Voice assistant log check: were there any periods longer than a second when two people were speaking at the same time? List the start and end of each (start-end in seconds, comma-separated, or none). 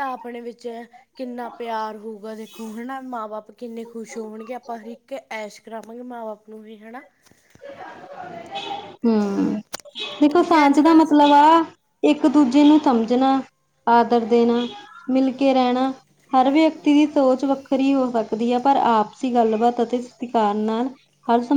none